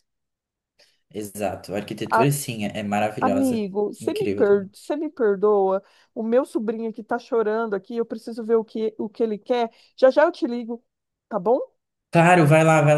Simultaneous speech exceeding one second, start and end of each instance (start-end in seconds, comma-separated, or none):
3.2-4.7